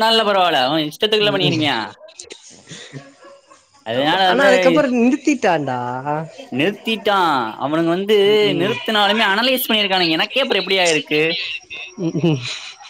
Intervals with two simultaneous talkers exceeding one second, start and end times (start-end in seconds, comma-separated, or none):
none